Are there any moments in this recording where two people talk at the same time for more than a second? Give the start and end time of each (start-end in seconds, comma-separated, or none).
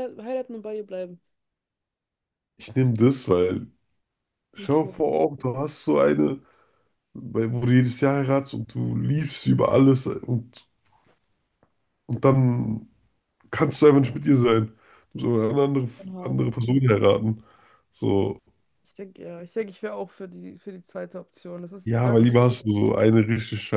21.8-23.2